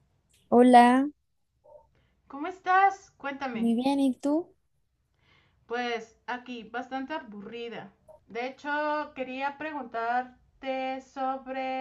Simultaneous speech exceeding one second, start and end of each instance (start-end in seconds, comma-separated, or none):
none